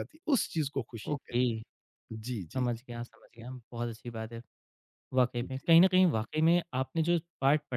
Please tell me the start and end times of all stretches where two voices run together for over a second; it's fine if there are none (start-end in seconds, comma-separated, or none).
none